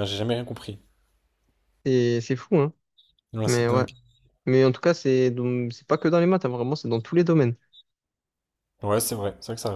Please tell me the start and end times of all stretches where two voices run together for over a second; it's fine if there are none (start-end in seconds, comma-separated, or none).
none